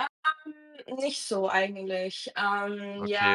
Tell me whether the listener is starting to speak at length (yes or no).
yes